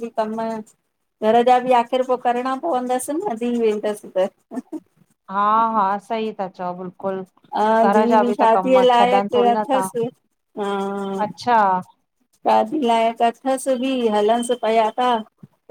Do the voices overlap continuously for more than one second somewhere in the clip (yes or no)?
yes